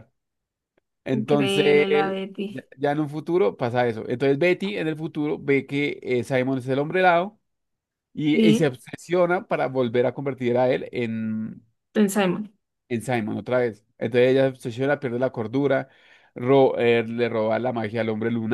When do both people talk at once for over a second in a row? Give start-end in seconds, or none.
1.1-2.5